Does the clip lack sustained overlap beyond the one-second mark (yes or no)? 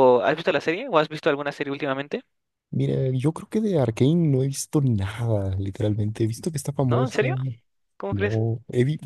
yes